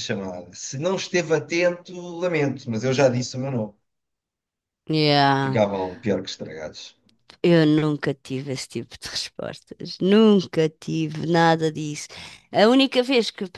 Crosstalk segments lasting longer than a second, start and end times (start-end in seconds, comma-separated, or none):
none